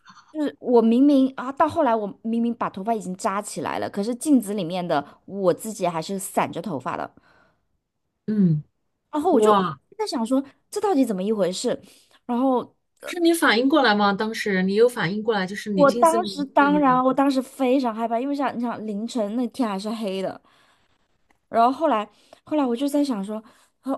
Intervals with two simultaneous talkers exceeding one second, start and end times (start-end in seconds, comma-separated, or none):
15.7-17.0